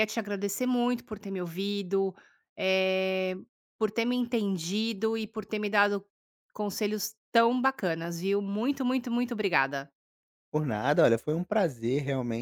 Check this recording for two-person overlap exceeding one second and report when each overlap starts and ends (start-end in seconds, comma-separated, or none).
none